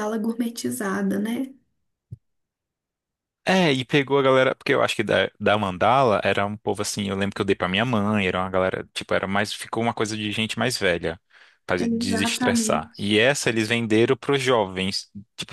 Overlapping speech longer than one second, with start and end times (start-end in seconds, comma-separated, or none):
11.8-13.1